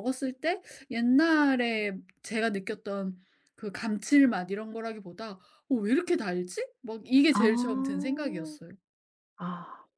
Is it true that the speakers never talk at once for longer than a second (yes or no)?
no